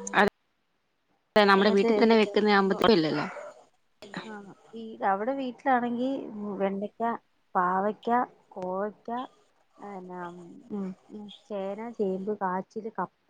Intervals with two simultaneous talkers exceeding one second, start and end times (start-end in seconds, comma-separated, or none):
1.6-2.8